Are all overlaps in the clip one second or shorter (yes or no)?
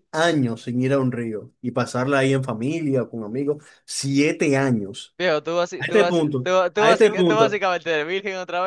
no